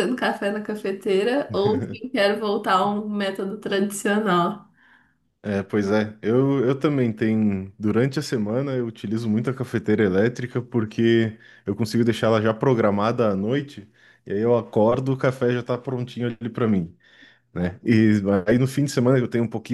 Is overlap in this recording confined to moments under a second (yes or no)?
yes